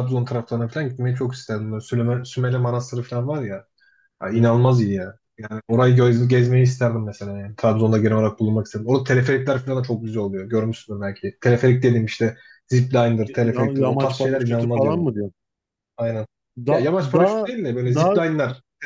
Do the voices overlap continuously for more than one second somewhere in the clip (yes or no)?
yes